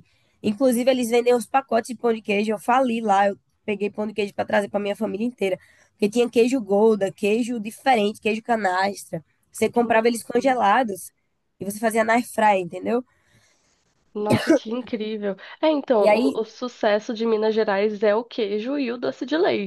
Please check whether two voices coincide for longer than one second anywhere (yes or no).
no